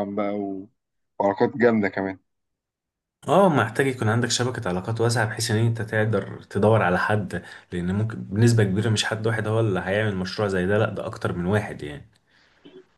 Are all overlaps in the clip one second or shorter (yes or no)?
yes